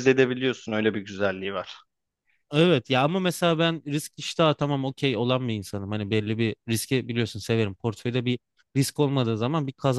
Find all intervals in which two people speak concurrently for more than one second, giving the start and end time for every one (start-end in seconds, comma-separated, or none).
none